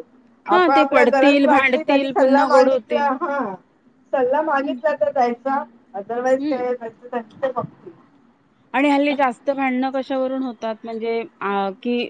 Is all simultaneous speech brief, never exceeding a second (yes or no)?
no